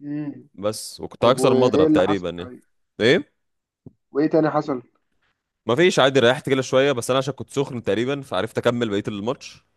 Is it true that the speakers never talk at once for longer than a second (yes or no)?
no